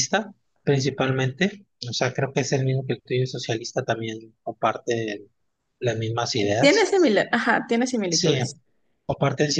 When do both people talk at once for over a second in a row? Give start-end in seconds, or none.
none